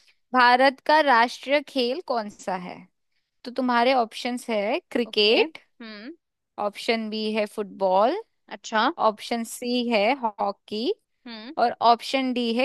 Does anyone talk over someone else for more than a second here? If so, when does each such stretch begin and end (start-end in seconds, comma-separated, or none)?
none